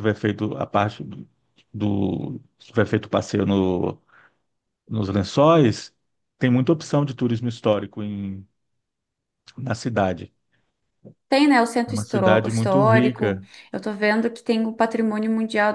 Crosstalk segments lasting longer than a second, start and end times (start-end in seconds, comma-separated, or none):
11.9-13.5